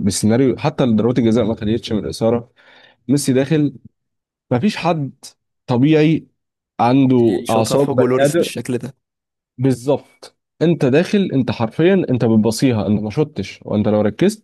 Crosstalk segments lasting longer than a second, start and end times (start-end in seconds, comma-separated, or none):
7.2-8.5